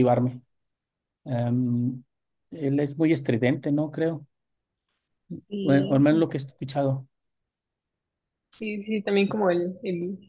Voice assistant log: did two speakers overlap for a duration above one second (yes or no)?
no